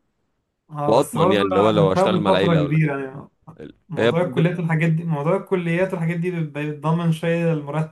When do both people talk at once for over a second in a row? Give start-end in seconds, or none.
0.9-2.9